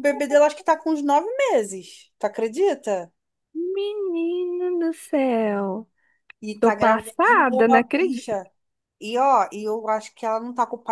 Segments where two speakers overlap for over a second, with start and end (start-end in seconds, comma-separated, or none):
6.6-8.4